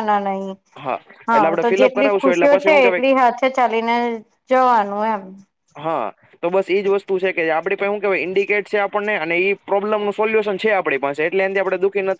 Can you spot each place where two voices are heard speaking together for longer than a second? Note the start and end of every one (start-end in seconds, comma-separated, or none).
1.3-3.1